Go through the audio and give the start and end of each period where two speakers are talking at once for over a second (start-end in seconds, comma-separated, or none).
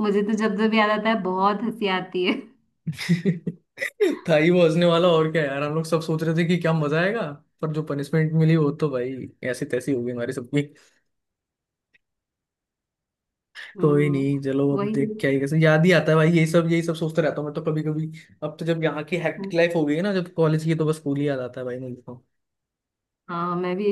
13.8-15.4